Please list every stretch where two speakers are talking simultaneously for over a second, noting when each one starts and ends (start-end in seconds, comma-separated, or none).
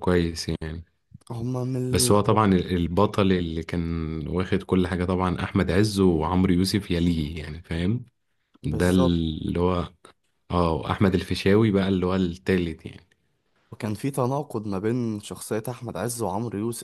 none